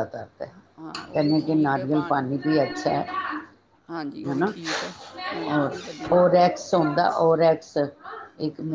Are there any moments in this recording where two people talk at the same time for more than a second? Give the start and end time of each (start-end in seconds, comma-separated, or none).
none